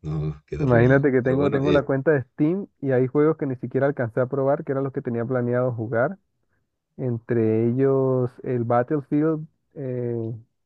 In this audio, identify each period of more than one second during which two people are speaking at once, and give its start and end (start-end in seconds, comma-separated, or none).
0.6-1.8